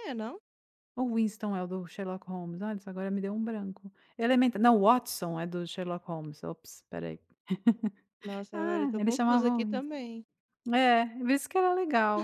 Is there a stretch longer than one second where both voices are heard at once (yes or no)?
yes